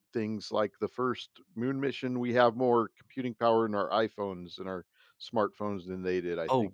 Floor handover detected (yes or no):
yes